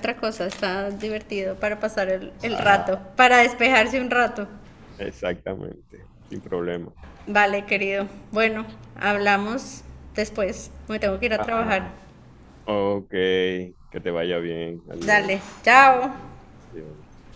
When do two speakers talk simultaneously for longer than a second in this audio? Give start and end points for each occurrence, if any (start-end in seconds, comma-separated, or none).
none